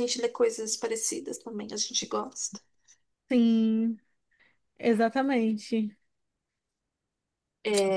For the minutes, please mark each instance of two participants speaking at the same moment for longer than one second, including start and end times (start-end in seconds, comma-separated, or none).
none